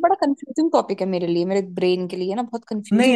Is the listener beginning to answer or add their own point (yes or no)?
yes